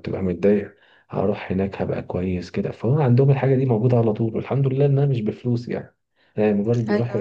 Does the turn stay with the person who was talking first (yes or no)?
yes